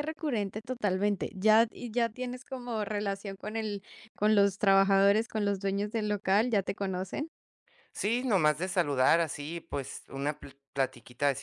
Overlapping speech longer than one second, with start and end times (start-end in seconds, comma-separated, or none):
none